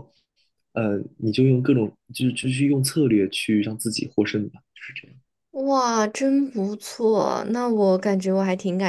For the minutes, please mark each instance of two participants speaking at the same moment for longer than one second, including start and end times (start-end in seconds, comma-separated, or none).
none